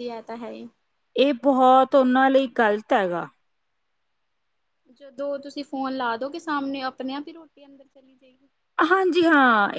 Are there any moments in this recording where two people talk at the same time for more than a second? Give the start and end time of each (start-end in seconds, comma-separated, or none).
none